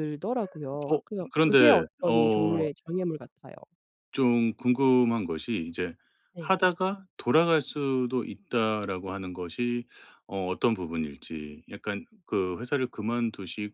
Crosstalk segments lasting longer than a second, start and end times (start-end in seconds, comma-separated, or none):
0.9-2.7